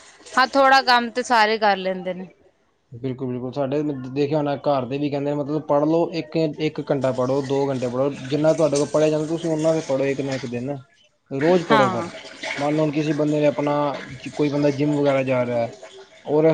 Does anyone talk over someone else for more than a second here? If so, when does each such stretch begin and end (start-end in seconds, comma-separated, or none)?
none